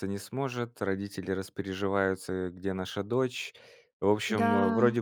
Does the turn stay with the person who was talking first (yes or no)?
yes